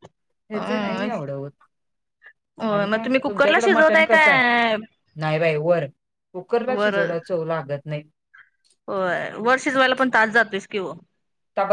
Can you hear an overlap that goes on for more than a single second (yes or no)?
yes